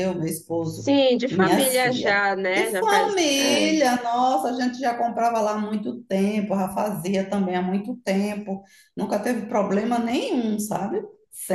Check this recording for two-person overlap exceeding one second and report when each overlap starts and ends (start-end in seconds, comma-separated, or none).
0.6-3.7